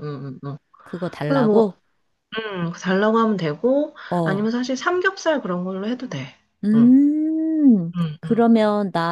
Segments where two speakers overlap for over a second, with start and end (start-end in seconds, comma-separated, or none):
none